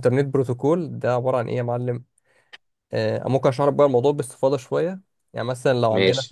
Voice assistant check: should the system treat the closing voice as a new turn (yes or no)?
no